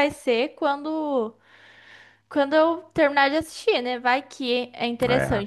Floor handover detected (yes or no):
no